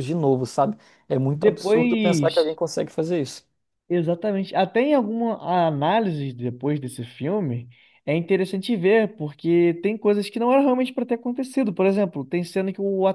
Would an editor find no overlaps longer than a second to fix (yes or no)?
no